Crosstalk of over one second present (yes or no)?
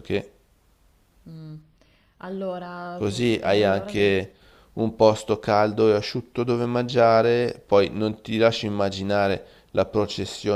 yes